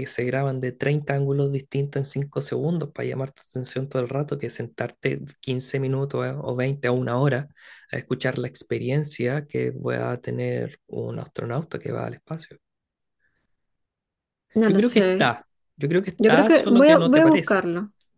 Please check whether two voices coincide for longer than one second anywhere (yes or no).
yes